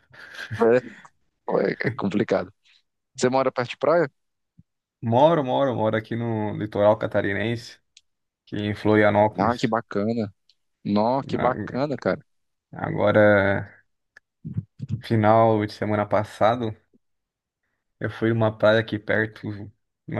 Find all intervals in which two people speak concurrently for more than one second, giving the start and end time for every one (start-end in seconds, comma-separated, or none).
none